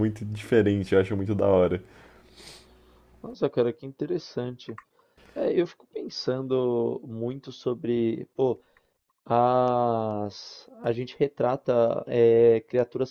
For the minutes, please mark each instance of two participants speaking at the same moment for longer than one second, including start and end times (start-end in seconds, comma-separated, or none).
none